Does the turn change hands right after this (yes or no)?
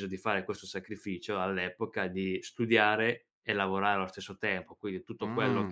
no